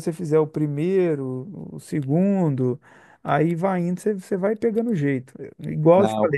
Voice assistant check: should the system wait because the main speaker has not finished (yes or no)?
yes